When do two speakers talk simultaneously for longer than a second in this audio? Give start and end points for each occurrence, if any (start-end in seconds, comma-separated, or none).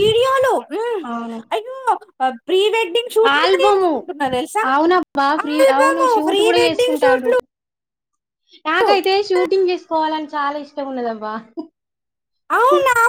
5.4-7.3